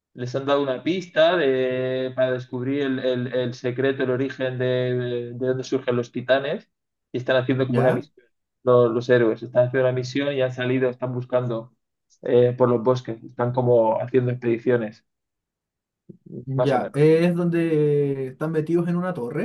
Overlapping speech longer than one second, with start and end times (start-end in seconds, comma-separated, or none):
none